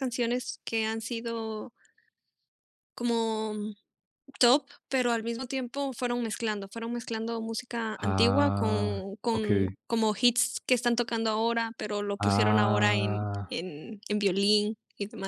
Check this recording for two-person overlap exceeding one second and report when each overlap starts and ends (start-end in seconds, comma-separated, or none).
8.0-9.7, 12.2-13.6